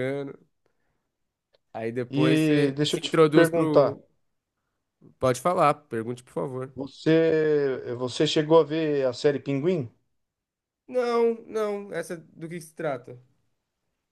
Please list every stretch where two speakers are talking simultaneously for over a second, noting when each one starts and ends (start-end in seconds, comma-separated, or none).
2.1-4.0